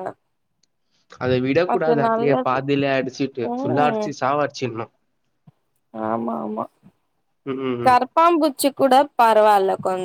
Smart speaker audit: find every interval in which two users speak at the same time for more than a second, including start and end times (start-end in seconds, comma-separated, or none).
none